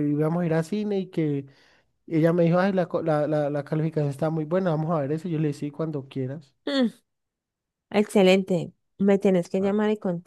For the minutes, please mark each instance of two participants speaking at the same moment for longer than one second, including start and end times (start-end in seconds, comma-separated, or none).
none